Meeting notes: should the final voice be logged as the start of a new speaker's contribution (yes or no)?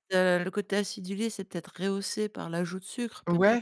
yes